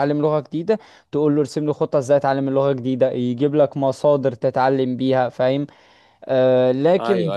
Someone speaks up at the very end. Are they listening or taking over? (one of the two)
taking over